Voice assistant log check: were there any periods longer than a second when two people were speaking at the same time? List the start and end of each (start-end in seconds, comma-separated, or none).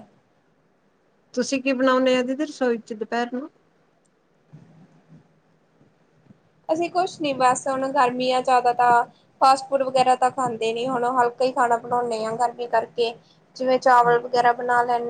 none